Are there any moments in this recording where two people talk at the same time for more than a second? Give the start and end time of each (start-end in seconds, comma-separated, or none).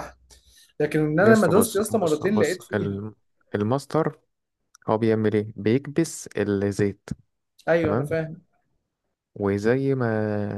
1.2-3.0